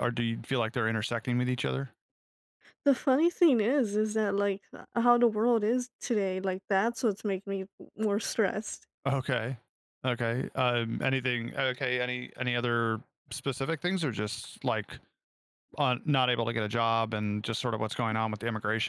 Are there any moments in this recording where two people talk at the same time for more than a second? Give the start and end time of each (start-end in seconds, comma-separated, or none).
none